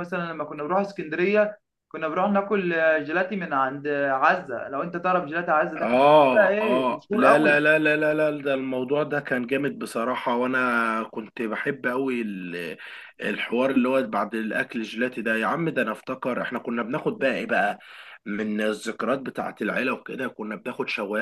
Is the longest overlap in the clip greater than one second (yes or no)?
yes